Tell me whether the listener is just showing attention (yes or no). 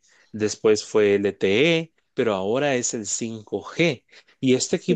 yes